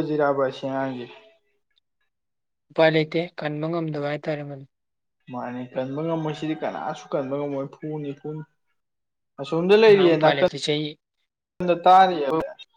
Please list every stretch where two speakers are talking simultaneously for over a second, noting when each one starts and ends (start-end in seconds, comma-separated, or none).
none